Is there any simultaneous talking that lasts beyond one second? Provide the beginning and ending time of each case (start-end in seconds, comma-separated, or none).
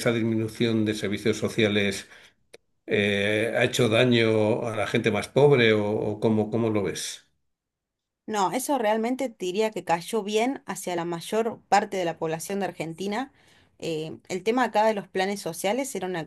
none